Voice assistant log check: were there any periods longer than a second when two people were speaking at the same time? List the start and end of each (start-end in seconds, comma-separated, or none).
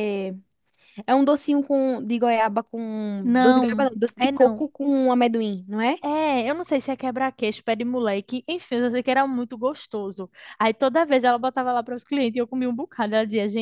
3.2-4.7